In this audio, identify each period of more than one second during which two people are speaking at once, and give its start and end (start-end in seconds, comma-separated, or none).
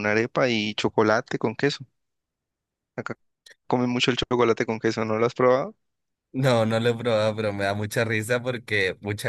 none